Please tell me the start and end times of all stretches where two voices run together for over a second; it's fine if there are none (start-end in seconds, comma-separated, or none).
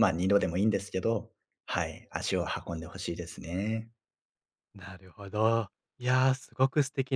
none